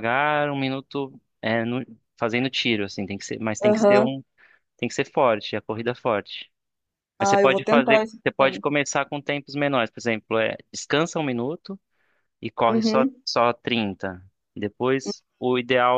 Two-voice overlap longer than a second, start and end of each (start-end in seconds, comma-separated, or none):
7.2-8.6